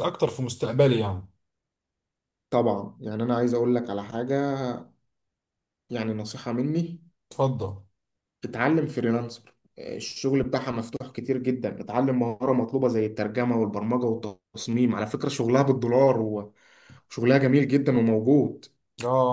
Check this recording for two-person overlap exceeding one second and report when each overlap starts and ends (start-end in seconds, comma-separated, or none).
none